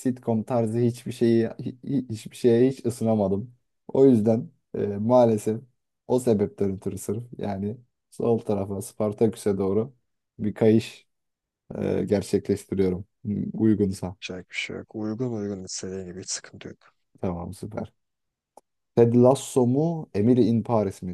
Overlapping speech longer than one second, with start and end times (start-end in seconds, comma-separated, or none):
none